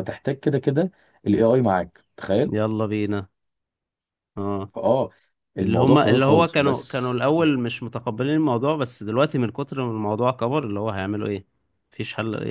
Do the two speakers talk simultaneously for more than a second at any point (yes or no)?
yes